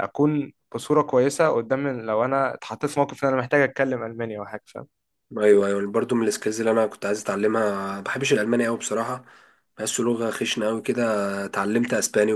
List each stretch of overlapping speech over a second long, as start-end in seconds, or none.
none